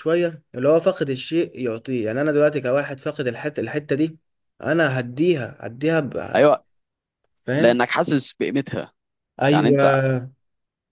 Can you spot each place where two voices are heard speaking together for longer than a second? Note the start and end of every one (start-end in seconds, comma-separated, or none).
none